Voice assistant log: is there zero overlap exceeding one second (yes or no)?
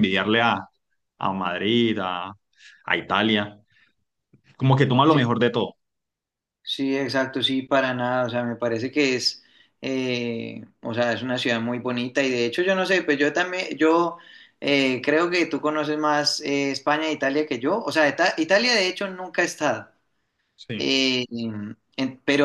yes